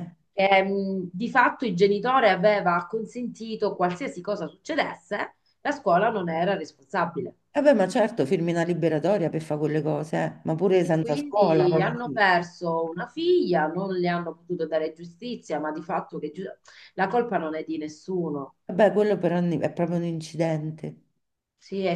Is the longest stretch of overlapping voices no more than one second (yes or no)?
no